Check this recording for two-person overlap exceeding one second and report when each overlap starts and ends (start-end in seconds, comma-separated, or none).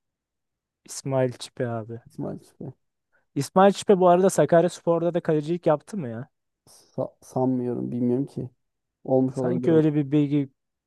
none